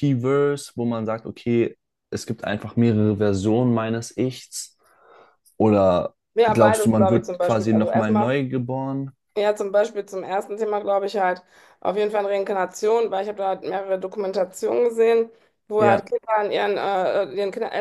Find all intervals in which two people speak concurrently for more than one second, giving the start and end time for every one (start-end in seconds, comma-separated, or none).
6.3-8.3